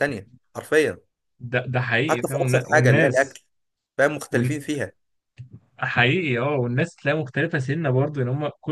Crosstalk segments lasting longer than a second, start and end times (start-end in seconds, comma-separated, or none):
2.1-3.4